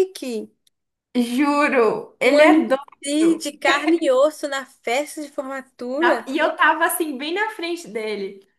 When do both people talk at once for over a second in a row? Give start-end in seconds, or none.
2.2-3.5